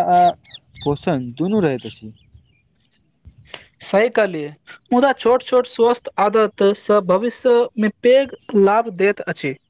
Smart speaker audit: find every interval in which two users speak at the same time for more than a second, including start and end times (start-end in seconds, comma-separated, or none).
none